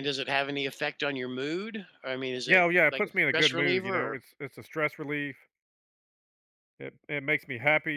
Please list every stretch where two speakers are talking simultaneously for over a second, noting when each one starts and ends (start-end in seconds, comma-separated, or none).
2.5-4.2